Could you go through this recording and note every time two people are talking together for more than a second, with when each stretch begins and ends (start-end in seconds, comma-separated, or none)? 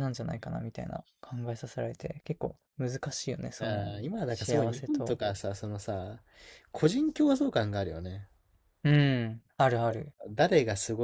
3.6-5.2